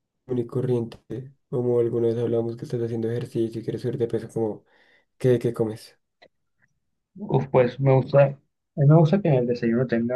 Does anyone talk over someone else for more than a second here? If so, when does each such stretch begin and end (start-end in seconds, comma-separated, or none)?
none